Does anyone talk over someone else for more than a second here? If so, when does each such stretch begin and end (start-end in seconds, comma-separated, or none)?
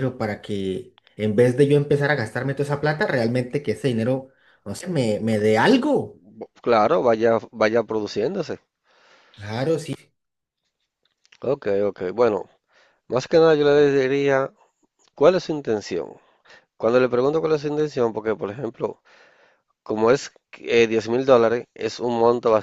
none